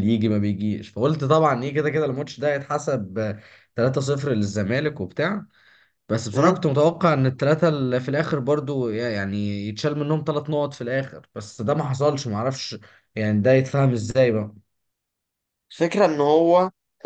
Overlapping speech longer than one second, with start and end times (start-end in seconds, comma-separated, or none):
none